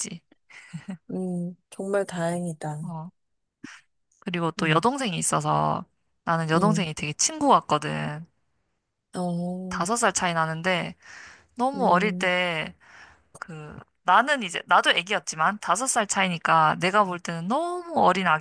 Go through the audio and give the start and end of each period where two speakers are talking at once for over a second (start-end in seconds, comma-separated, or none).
none